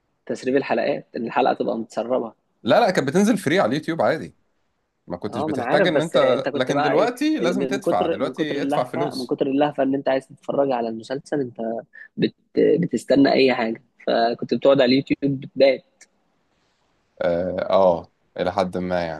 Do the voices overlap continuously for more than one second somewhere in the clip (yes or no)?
yes